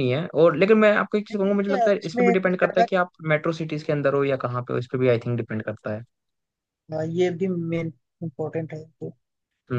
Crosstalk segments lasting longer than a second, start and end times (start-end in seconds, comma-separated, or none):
1.3-2.9